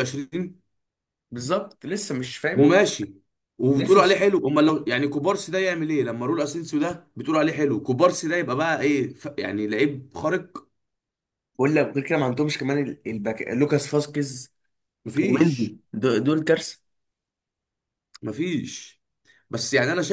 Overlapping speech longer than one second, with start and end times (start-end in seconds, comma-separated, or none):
none